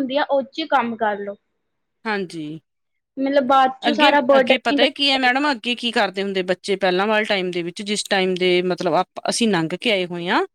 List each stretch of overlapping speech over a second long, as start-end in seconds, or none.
3.9-5.5